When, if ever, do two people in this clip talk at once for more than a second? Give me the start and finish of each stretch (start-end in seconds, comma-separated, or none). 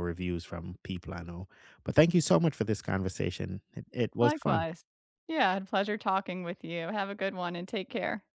none